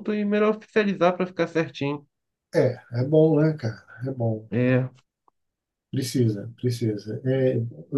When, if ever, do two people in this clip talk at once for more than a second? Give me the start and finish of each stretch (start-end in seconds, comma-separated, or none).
none